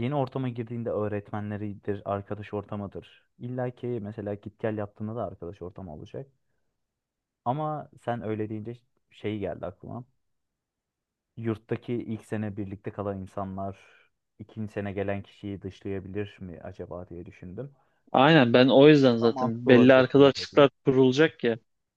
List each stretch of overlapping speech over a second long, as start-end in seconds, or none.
19.0-20.7